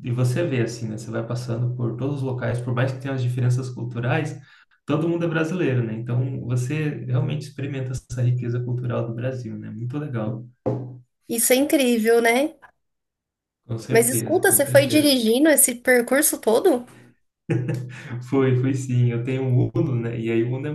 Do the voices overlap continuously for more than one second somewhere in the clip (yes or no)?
yes